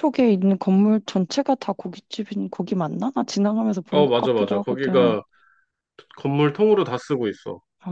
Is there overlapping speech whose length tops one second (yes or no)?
yes